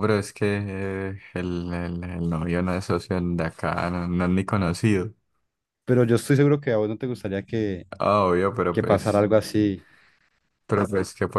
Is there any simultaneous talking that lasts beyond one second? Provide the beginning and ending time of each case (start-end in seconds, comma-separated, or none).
none